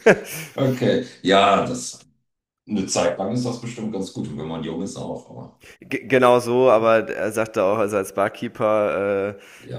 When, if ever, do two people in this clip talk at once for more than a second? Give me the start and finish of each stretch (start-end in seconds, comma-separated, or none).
none